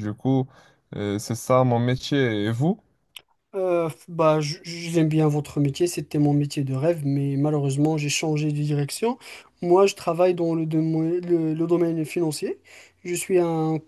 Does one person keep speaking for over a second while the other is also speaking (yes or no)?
no